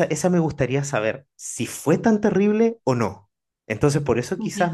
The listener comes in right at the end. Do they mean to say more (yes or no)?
no